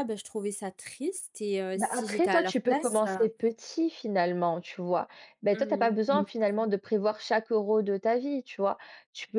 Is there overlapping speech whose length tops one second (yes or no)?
yes